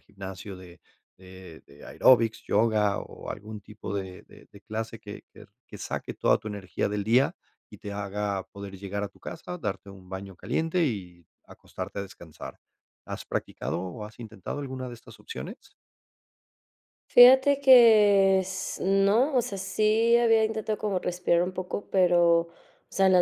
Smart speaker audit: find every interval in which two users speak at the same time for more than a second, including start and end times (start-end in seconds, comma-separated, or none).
none